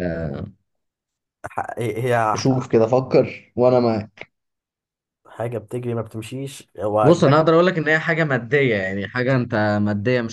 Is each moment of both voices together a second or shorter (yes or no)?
yes